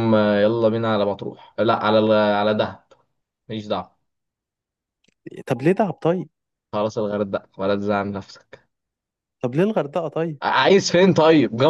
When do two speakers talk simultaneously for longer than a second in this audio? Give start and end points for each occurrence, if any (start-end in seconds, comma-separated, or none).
none